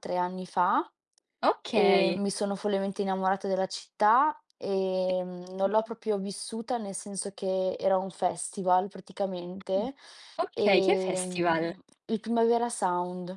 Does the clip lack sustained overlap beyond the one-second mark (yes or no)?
no